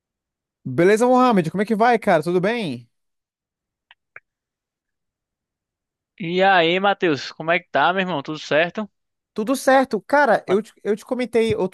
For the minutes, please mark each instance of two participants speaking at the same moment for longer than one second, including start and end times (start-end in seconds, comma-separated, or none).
none